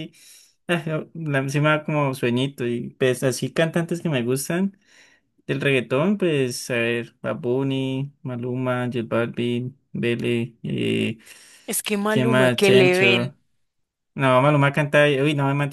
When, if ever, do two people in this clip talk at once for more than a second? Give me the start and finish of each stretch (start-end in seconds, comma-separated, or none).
12.1-13.3